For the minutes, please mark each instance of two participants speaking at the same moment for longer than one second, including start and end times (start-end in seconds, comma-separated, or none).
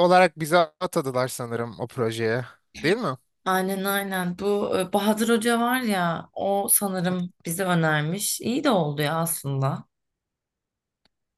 none